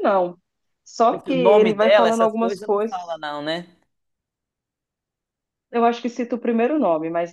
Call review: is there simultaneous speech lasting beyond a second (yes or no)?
yes